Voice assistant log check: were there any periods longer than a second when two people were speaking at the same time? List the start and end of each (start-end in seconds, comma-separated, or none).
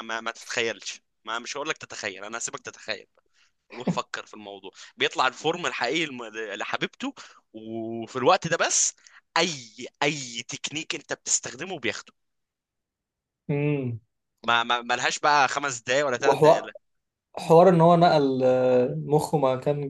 none